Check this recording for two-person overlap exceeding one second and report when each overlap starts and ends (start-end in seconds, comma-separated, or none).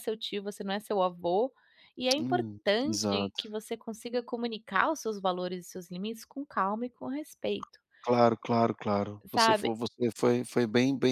2.2-3.5